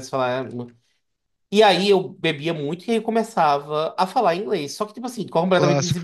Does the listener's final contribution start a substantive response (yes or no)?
no